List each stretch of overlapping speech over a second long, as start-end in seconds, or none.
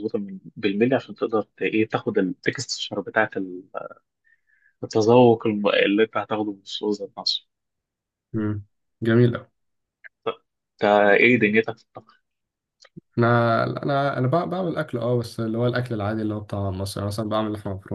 none